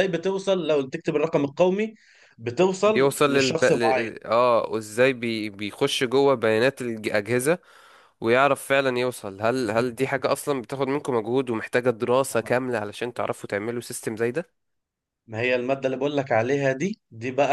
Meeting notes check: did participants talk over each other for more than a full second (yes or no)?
yes